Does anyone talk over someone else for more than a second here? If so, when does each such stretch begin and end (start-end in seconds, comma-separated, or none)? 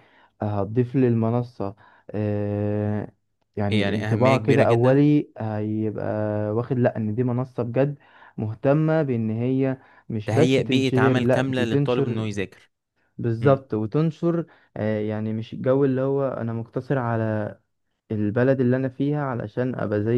3.7-5.0, 10.2-12.3